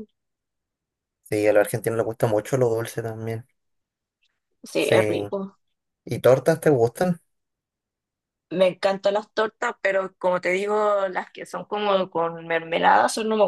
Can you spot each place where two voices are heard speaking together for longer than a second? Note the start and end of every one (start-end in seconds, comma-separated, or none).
none